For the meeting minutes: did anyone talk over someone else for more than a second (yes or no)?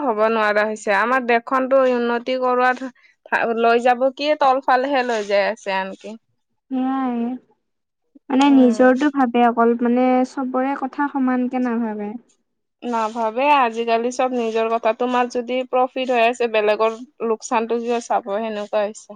no